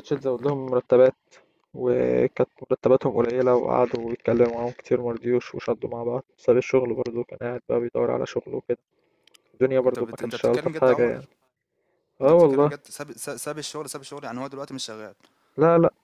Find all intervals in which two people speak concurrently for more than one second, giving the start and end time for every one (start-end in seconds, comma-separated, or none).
9.8-11.3